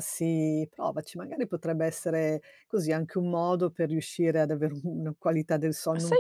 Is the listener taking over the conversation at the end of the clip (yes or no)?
yes